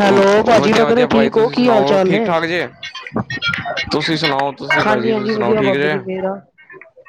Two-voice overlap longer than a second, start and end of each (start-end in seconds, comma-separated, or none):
0.6-2.3